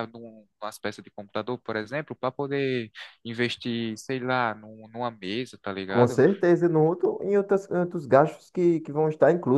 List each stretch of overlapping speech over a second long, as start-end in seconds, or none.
none